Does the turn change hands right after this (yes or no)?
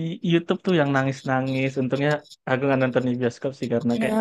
yes